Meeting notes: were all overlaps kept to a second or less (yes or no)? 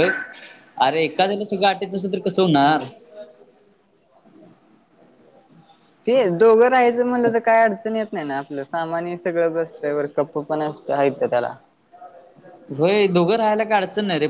yes